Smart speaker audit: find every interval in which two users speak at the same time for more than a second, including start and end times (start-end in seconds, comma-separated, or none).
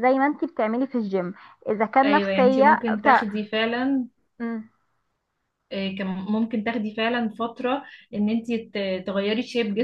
2.0-3.3